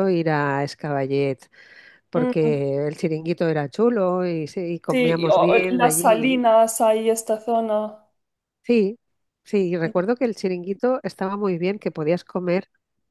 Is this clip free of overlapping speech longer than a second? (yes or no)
no